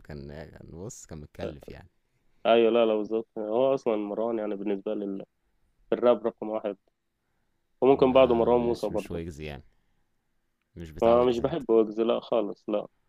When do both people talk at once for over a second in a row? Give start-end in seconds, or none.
7.9-9.2